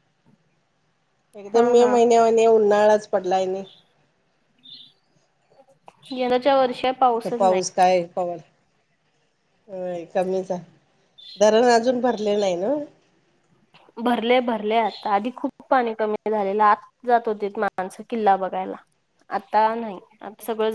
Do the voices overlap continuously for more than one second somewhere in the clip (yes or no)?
no